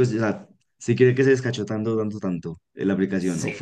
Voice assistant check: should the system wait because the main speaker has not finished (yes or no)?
no